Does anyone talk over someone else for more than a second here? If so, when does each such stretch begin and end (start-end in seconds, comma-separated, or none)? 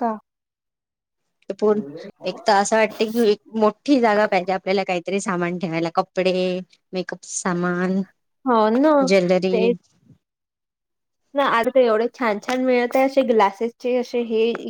none